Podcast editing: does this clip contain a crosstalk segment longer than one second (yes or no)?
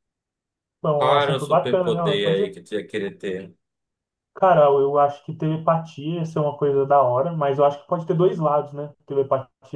yes